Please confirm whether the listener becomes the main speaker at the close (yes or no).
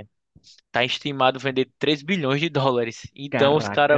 no